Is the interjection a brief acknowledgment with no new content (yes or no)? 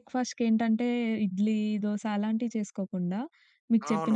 no